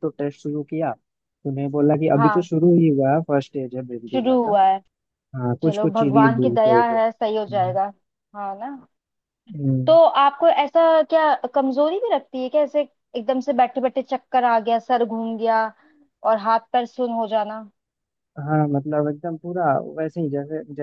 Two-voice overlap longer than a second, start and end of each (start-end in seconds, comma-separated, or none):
5.6-7.8